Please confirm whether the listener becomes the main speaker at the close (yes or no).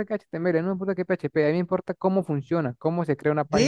yes